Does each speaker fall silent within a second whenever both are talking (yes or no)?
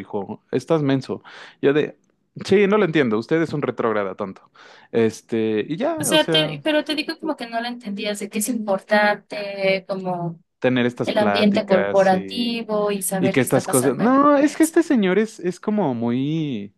no